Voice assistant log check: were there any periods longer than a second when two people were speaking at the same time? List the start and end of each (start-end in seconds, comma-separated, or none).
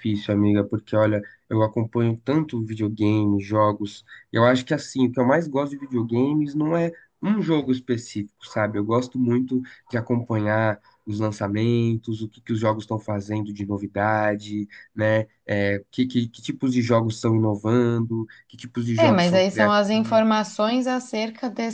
19.0-20.2